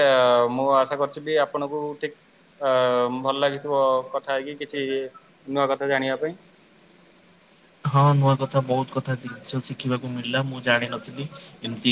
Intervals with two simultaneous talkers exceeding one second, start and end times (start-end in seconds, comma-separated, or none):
none